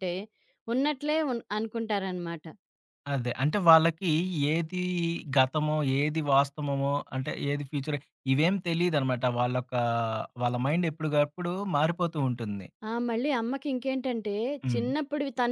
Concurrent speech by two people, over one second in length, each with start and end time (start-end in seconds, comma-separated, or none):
none